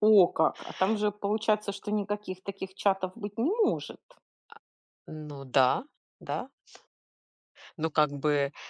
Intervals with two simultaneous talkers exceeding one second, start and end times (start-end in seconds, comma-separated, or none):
none